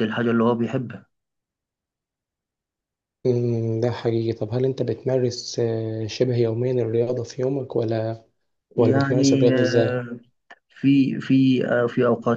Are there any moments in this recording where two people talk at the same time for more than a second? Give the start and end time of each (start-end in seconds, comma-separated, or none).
8.8-10.1